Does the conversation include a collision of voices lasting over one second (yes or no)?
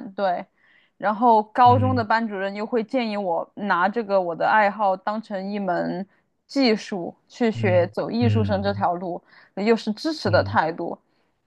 yes